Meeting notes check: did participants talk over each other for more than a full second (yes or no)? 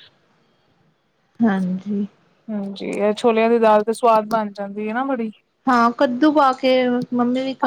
no